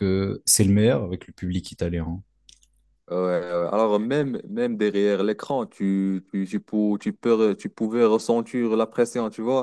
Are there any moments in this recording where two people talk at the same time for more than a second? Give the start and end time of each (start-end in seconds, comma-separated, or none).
none